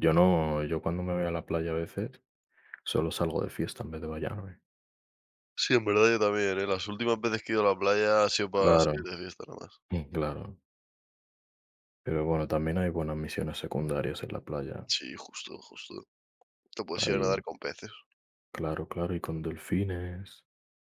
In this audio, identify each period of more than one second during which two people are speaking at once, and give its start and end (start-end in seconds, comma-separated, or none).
none